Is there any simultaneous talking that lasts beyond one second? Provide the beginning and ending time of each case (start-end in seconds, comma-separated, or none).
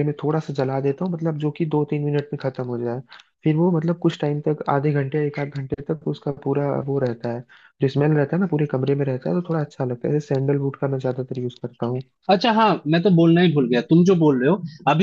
none